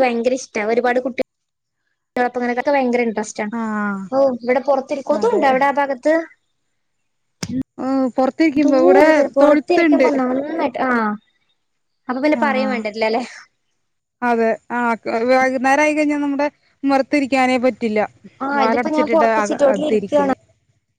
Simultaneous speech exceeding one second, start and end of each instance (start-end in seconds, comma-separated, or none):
18.6-20.3